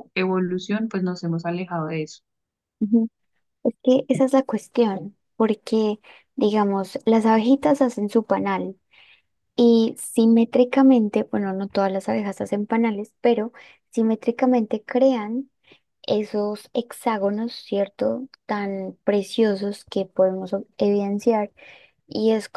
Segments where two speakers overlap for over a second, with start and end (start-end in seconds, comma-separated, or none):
none